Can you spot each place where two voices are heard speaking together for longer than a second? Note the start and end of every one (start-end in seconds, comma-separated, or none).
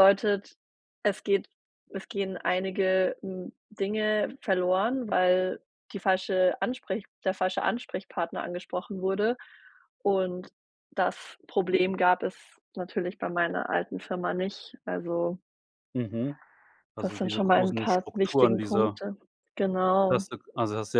17.0-19.0